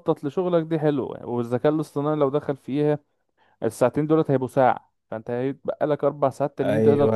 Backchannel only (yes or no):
no